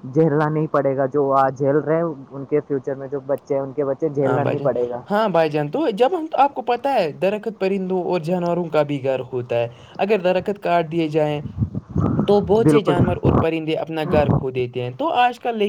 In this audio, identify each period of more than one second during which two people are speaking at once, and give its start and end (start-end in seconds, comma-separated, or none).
none